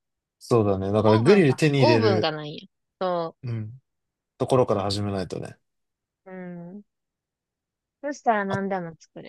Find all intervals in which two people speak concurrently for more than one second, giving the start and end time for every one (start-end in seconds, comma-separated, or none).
1.0-2.3